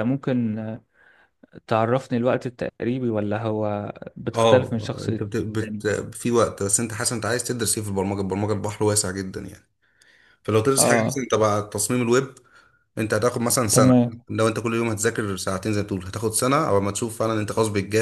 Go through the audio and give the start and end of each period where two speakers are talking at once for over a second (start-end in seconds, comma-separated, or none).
4.3-5.8